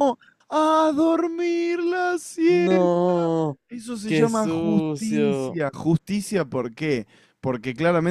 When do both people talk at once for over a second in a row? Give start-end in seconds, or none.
4.0-5.6